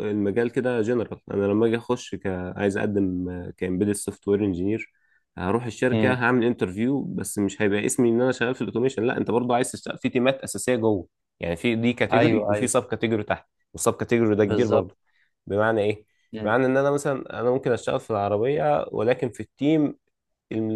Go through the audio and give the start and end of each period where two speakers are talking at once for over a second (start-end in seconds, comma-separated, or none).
none